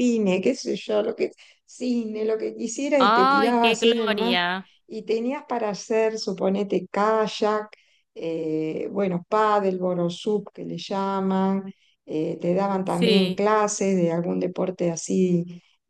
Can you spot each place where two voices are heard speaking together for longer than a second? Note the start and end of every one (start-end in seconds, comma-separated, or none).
3.0-4.4